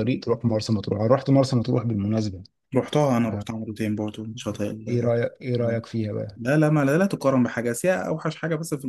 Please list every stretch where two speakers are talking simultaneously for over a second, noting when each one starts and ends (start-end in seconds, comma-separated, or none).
none